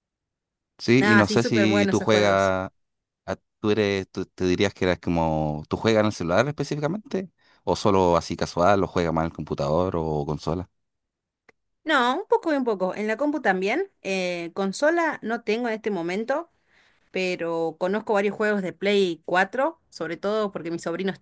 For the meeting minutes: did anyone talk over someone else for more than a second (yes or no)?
yes